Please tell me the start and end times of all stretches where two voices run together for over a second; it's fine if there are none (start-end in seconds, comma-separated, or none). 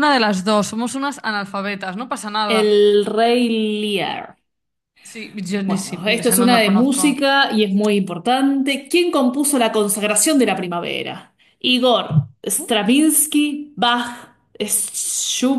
5.7-7.3